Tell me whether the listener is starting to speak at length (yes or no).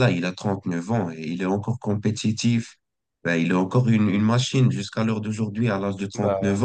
no